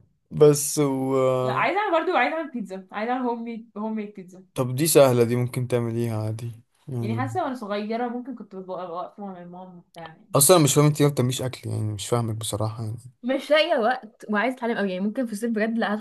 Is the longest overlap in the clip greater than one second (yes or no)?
no